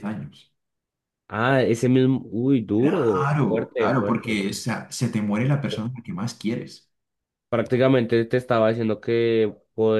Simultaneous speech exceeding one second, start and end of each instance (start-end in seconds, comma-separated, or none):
2.8-4.4